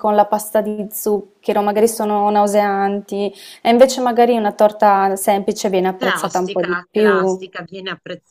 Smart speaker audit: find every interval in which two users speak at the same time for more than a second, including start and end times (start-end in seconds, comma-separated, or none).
6.0-7.5